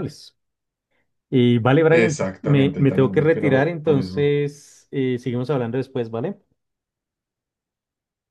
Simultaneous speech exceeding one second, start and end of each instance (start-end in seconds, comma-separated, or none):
1.9-4.3